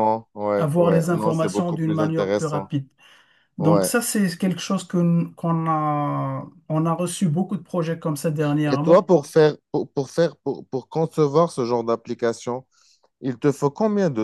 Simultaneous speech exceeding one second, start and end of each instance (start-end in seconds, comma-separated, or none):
0.6-2.7